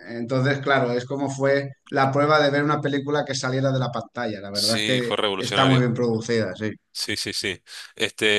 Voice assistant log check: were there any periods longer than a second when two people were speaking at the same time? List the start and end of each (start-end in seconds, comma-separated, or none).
4.5-5.9